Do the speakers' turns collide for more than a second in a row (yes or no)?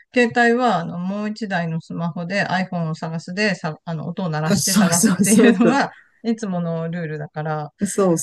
yes